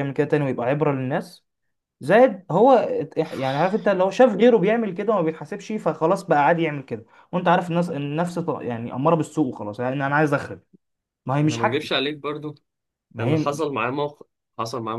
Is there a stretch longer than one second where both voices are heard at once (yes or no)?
no